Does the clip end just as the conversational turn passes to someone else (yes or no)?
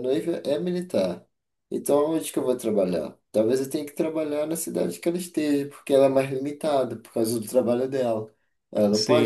yes